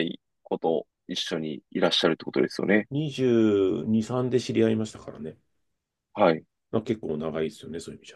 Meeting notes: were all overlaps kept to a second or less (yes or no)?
yes